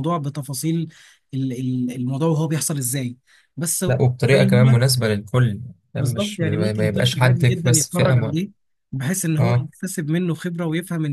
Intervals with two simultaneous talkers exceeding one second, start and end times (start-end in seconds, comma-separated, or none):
6.0-8.5